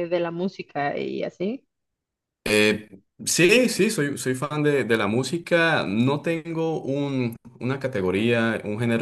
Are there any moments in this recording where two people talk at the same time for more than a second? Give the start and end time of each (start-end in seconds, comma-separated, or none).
none